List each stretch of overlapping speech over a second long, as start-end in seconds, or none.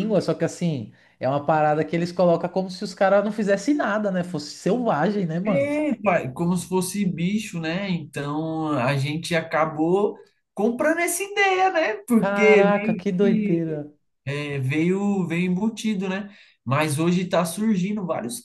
12.1-13.6